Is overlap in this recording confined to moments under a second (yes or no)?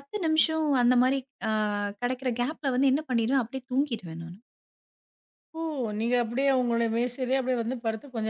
yes